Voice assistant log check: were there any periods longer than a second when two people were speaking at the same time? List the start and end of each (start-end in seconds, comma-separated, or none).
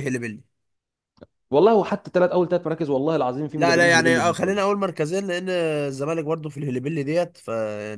3.5-4.8